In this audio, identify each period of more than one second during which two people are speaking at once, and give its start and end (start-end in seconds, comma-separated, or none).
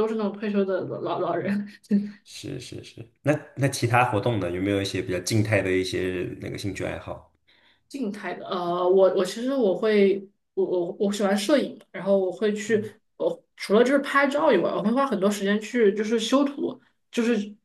none